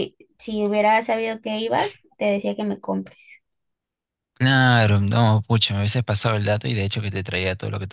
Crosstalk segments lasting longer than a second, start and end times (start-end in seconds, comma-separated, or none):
none